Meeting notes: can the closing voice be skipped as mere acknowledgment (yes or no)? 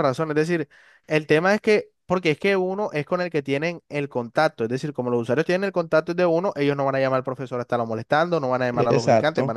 no